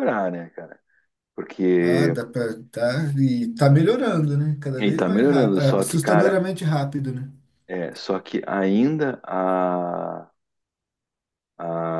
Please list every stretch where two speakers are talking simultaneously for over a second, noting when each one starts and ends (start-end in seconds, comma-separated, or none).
4.8-6.4